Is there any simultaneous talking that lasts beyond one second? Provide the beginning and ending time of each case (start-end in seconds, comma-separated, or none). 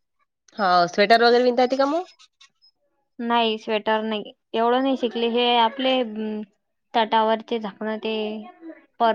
none